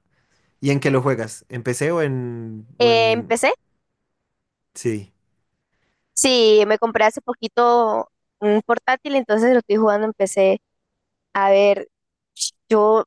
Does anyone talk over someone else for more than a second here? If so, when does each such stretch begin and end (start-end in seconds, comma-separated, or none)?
none